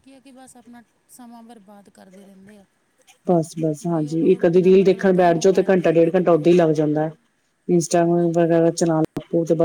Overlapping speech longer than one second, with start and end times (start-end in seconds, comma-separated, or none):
3.8-6.8